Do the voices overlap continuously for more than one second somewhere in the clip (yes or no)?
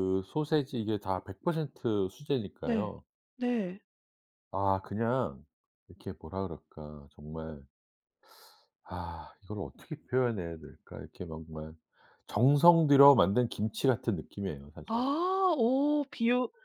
no